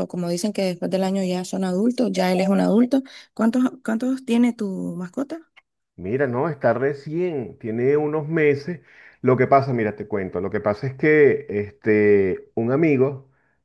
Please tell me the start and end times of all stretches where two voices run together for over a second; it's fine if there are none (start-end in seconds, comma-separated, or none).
none